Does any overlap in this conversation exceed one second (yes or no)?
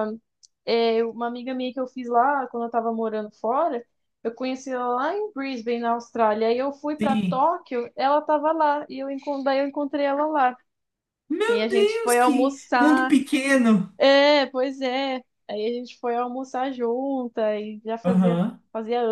yes